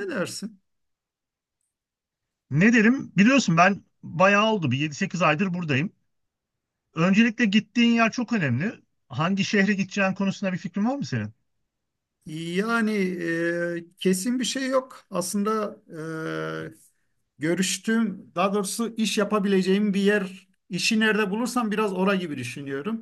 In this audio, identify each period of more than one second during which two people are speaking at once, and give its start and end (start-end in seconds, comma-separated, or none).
none